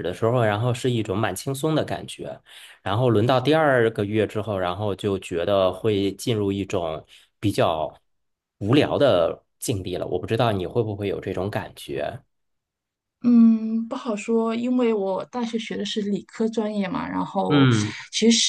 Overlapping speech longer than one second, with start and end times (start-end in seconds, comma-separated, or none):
none